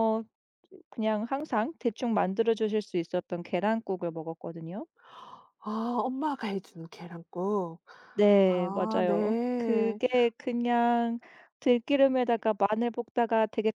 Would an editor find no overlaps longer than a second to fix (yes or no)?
no